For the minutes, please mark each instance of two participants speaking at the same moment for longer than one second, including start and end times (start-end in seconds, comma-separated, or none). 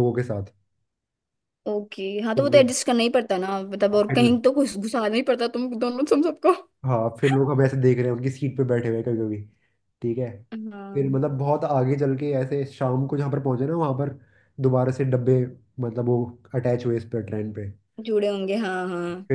none